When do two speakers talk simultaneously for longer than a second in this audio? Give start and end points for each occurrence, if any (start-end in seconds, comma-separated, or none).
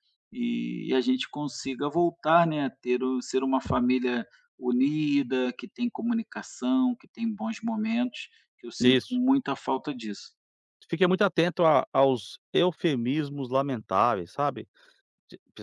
none